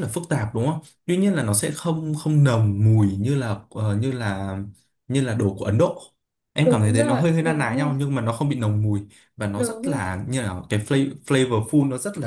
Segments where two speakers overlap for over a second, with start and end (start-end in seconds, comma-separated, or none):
6.6-7.9